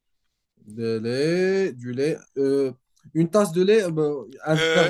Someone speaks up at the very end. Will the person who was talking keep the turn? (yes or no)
no